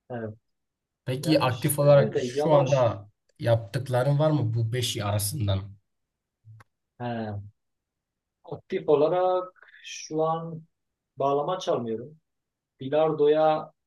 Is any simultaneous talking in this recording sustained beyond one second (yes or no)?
yes